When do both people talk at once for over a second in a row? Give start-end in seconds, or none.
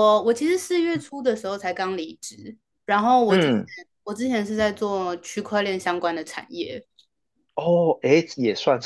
none